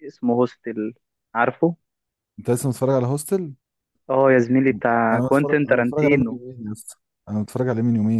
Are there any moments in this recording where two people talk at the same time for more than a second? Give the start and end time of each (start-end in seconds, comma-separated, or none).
5.1-6.4